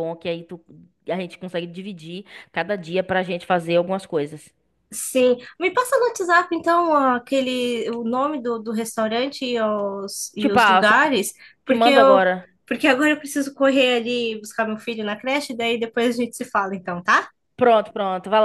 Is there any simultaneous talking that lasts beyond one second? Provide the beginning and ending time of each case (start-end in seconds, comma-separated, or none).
none